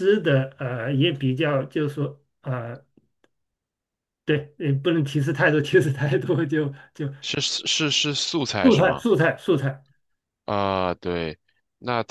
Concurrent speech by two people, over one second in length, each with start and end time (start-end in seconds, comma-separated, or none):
none